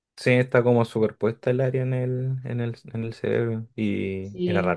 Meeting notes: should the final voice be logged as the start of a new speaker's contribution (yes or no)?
no